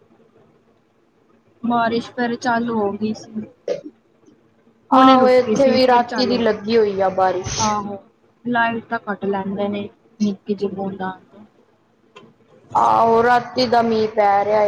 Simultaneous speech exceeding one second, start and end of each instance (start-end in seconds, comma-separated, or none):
5.0-6.6